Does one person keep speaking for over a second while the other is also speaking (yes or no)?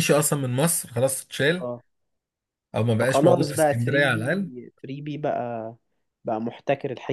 yes